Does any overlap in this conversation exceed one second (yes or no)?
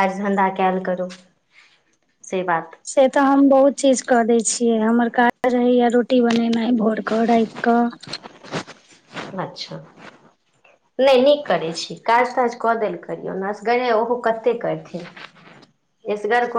no